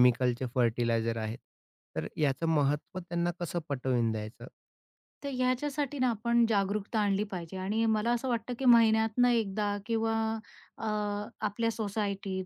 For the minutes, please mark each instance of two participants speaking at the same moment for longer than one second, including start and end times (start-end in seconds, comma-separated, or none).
none